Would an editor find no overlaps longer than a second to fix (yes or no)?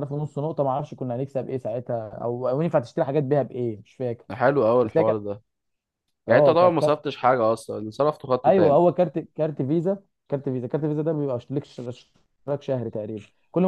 yes